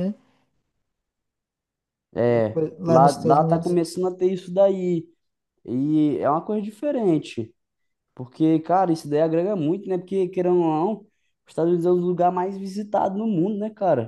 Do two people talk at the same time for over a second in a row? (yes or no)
yes